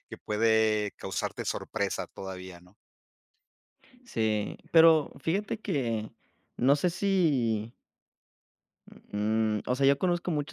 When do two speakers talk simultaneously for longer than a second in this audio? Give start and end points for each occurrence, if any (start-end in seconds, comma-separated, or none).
none